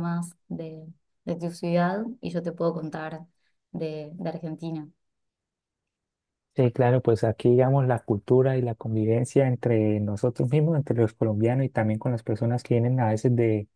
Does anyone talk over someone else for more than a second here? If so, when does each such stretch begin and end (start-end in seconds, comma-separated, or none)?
none